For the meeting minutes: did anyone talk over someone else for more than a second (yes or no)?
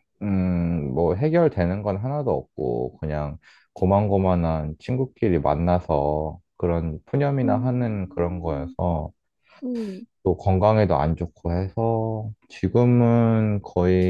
yes